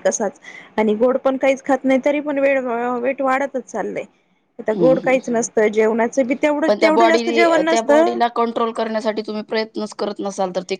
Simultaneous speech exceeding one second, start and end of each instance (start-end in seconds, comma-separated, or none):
6.7-8.2